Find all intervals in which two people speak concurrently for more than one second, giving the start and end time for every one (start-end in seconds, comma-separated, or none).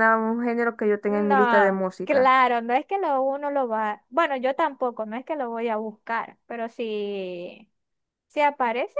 1.1-2.4